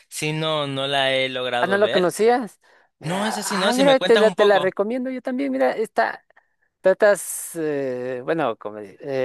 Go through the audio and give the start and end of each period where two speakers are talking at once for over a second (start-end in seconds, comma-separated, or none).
3.0-4.8